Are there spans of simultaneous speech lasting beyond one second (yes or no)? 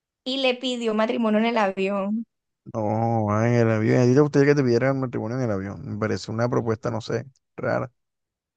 no